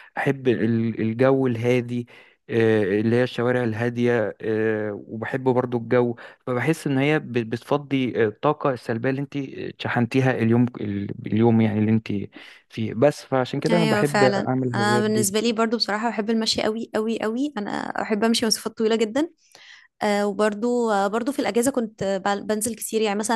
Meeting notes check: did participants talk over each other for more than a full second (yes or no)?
yes